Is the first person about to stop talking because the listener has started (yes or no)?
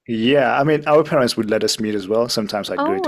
no